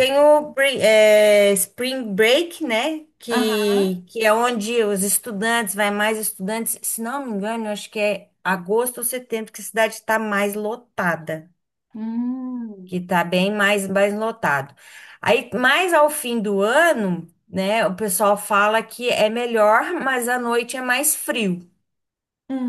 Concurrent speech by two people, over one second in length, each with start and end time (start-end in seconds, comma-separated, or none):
none